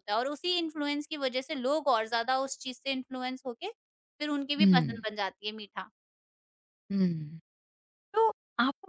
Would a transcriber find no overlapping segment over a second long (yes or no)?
yes